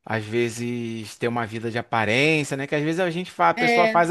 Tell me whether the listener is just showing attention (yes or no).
yes